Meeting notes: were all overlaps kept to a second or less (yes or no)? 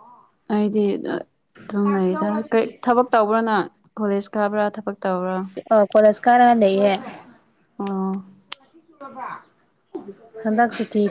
yes